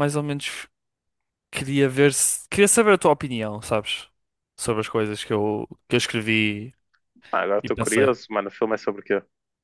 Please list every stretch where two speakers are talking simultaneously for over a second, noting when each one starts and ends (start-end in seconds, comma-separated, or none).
none